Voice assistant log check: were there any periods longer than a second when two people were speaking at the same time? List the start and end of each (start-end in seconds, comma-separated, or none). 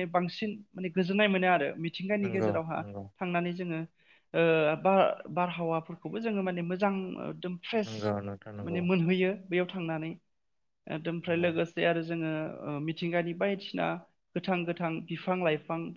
none